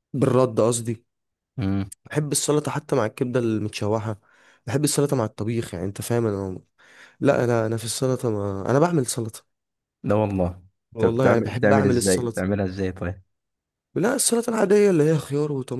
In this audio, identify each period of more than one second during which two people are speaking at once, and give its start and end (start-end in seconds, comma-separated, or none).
11.0-12.4